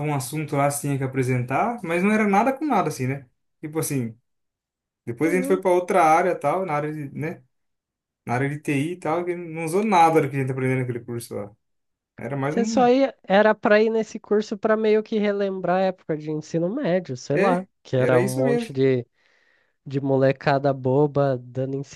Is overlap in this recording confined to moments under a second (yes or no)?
no